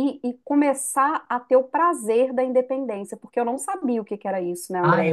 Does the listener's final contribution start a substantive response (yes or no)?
yes